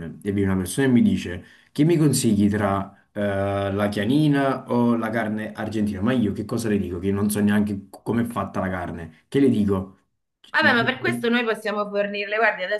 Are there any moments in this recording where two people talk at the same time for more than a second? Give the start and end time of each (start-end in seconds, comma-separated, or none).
none